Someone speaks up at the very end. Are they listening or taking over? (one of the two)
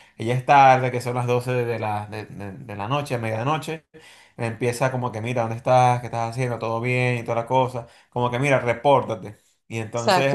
listening